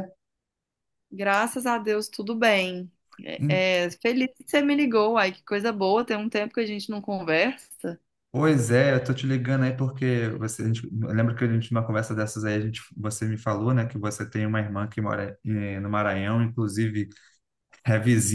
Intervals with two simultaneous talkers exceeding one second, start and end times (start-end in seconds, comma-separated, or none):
none